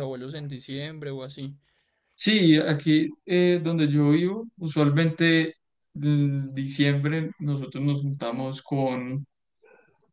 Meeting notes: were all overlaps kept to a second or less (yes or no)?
yes